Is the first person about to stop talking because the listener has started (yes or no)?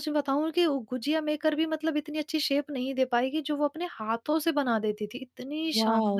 yes